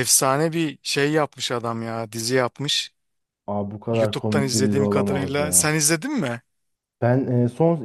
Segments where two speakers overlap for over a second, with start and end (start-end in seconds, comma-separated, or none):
3.9-5.7